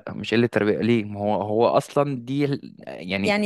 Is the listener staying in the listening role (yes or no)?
no